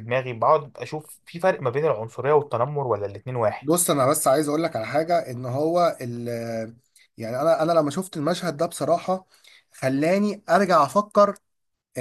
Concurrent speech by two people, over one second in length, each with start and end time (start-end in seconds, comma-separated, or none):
none